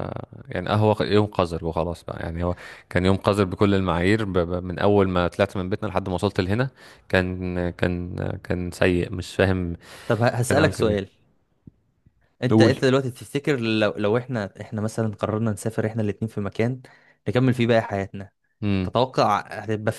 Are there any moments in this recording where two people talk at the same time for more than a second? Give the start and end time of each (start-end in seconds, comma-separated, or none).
none